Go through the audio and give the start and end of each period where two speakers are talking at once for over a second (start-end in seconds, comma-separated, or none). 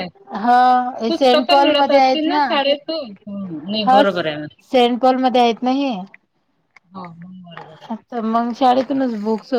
1.1-2.4